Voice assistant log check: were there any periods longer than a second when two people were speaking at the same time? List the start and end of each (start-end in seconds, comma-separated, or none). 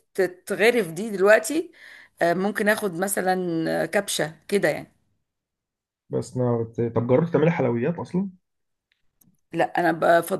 none